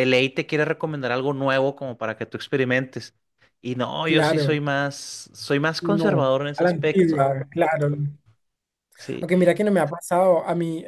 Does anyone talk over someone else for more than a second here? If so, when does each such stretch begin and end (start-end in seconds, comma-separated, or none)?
5.8-7.2